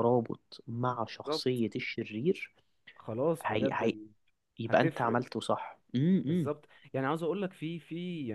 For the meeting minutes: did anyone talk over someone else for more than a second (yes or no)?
no